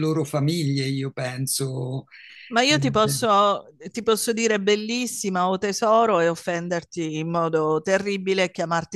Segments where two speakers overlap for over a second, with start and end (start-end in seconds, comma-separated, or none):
none